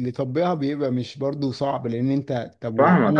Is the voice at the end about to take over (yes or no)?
yes